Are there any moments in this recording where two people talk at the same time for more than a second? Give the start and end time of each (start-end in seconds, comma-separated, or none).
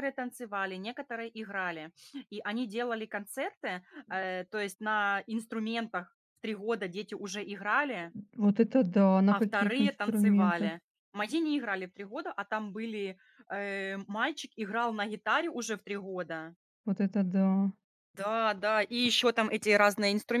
9.3-10.7